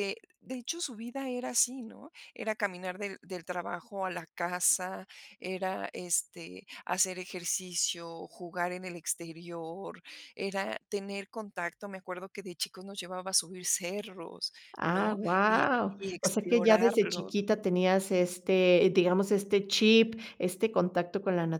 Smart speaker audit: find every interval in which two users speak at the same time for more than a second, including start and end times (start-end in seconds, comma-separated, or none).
14.7-17.3